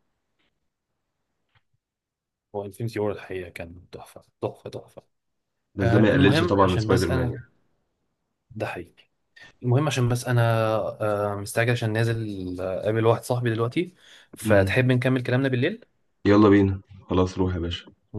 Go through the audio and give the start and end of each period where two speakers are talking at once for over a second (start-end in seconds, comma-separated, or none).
5.8-7.4